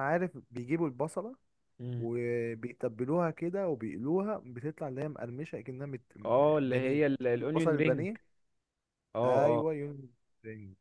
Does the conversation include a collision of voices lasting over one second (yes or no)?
yes